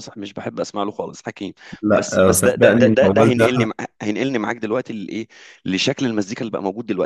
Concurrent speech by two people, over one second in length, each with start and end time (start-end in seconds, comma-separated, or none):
1.9-3.7